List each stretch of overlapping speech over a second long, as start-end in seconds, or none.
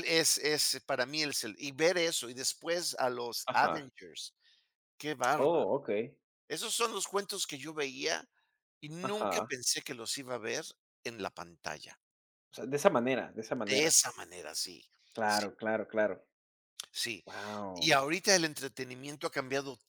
none